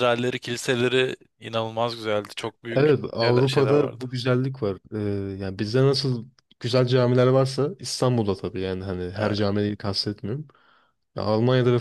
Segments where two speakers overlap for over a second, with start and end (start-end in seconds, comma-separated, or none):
2.7-4.0